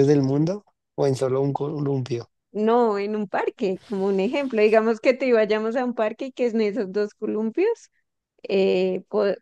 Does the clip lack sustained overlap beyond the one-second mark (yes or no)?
yes